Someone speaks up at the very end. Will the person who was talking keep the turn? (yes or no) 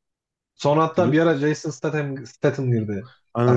no